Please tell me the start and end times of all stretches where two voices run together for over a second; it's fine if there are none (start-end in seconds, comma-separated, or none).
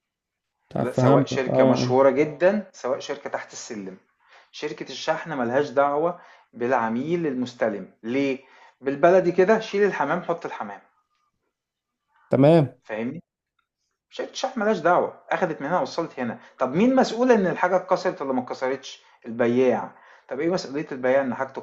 0.8-2.0